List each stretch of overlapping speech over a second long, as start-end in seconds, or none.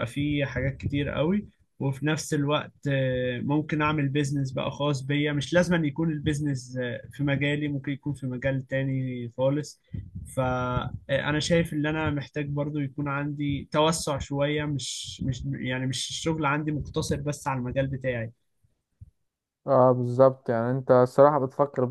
none